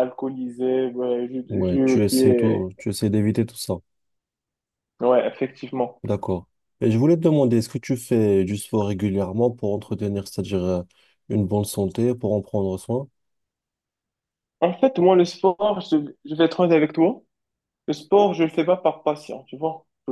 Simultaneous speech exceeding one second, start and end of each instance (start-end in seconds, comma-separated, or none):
1.5-2.7